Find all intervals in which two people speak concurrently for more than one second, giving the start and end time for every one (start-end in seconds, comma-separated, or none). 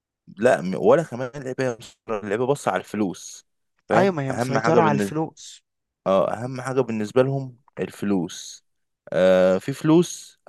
3.9-5.2